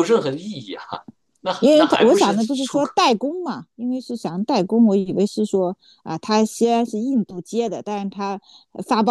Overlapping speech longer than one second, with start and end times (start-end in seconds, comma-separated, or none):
1.6-2.9